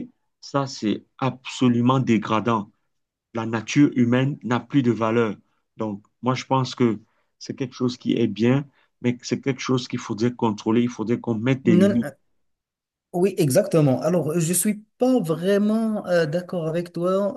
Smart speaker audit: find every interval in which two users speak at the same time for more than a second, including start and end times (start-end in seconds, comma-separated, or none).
none